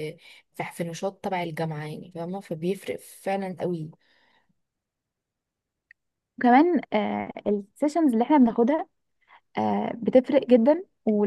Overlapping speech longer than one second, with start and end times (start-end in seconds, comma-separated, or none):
none